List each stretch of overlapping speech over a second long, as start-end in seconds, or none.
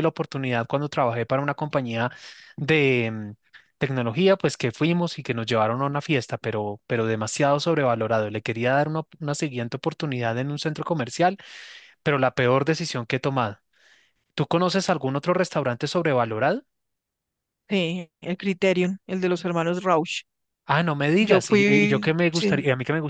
21.2-22.5